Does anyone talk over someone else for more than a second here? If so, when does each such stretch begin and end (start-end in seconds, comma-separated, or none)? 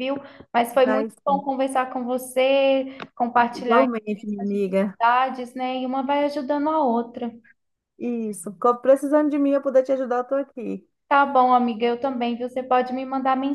3.5-5.0